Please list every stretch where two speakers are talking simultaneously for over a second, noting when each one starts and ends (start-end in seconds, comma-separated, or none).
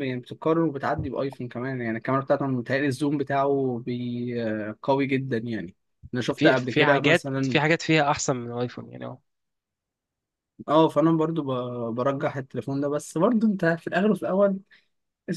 6.4-7.6